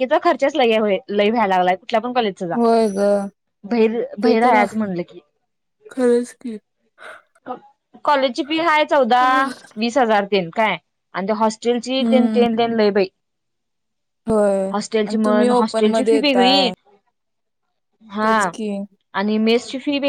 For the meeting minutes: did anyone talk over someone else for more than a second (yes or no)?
yes